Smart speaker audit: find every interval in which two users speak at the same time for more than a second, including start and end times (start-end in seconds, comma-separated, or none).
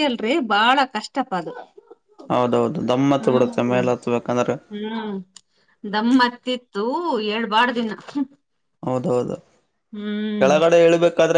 none